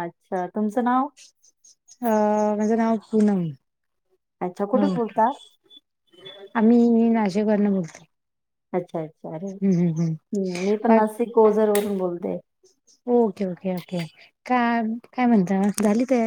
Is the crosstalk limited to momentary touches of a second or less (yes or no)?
yes